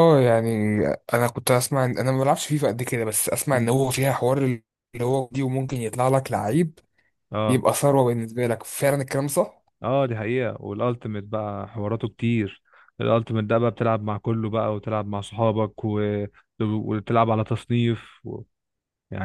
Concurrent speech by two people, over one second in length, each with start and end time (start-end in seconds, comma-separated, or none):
none